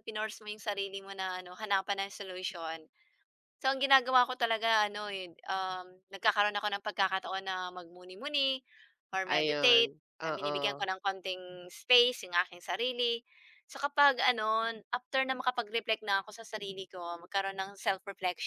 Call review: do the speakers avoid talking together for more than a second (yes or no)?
no